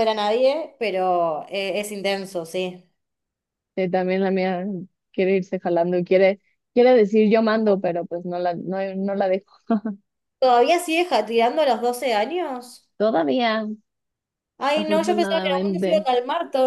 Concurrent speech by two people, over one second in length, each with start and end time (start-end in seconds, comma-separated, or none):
14.7-16.1